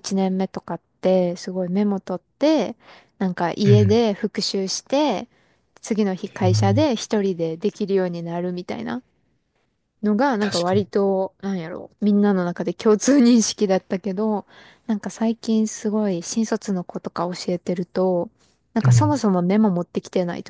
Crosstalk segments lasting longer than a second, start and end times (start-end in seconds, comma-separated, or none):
none